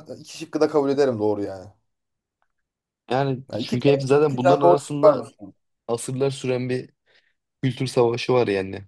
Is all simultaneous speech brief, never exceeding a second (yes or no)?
no